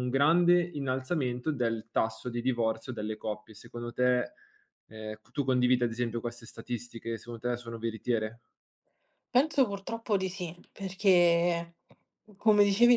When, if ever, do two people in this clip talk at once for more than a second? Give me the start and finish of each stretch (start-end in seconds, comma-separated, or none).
none